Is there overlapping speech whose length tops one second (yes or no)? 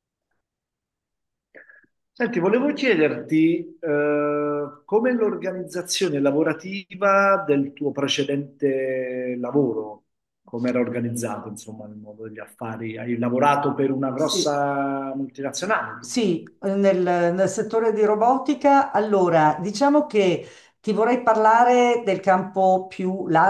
no